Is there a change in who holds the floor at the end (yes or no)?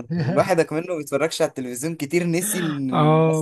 yes